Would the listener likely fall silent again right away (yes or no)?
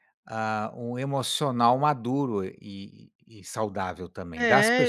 no